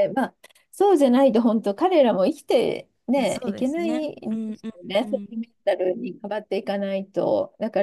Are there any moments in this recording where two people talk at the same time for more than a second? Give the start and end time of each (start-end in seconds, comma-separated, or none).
3.1-5.3